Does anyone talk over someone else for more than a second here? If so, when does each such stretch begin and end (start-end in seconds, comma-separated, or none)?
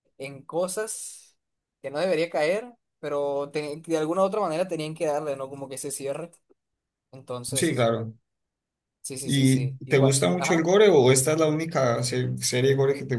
9.2-10.7